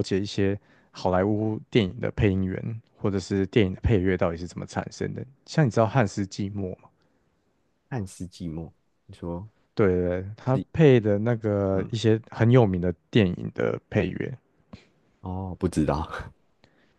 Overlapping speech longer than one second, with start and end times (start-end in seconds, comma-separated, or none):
none